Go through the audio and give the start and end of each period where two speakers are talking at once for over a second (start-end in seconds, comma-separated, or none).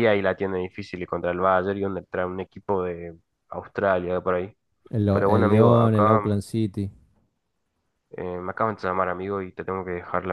5.1-6.4